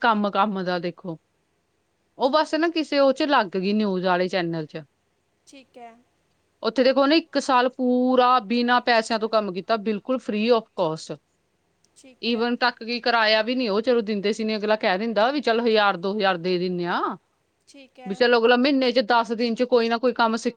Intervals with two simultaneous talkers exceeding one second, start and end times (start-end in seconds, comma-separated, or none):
none